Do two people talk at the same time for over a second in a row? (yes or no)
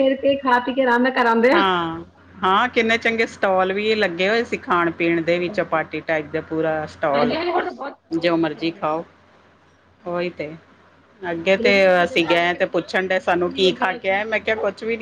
yes